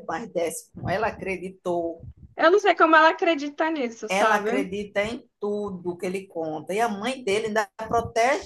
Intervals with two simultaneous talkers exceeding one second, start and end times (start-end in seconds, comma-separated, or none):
none